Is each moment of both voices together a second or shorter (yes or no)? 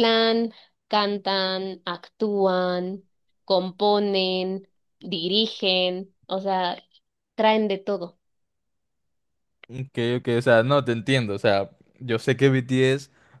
yes